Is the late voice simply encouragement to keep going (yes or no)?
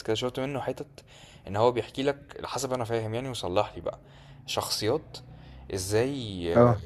yes